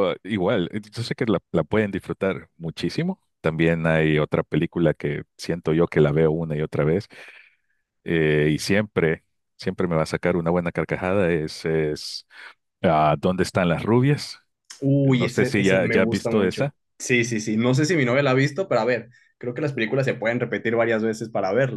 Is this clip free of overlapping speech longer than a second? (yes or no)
no